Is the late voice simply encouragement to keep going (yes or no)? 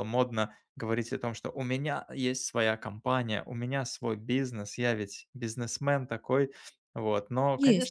yes